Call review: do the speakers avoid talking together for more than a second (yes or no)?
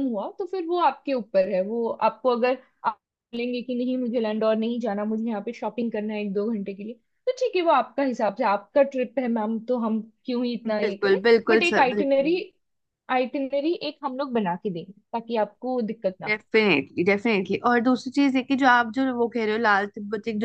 no